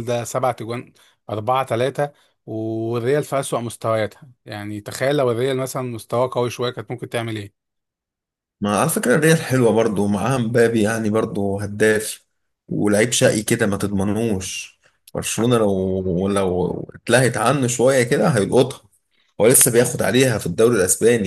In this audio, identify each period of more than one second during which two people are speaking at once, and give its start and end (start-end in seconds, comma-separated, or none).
none